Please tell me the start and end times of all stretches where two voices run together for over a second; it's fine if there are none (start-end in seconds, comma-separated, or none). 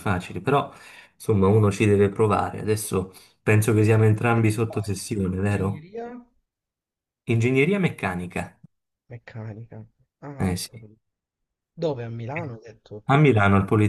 none